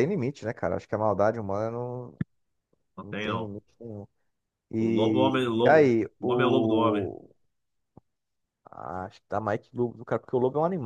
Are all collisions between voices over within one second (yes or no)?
no